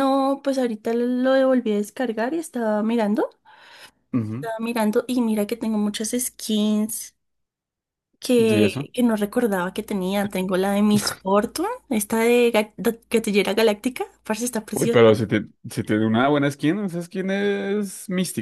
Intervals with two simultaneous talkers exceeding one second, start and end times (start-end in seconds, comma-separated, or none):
none